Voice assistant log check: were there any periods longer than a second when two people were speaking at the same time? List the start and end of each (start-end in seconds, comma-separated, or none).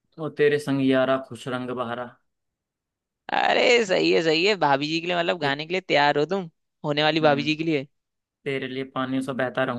none